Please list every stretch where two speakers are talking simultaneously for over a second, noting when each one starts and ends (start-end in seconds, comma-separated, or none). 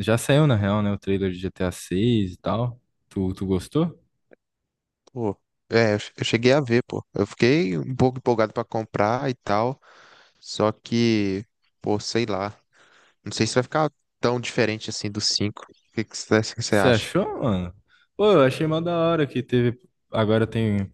none